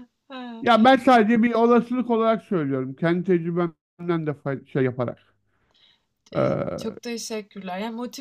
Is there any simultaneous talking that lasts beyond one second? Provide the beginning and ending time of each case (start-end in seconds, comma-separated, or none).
none